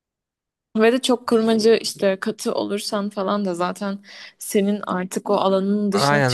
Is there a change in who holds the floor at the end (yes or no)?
yes